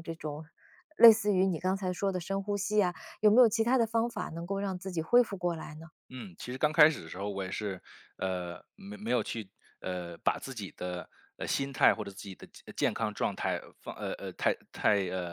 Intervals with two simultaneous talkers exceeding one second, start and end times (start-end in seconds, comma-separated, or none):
none